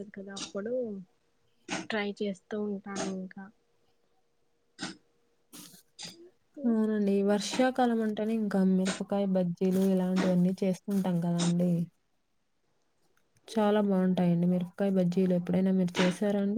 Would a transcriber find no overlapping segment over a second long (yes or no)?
yes